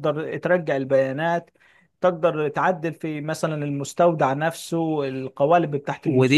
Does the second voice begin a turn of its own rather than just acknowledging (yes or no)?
yes